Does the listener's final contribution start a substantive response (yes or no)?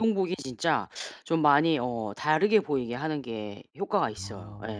yes